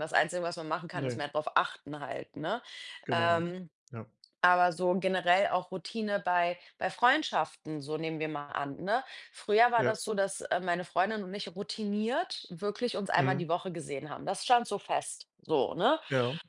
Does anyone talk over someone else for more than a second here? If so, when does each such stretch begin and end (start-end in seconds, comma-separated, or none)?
none